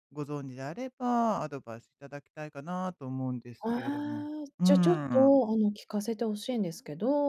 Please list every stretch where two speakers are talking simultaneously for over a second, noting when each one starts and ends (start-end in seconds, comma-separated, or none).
3.6-5.4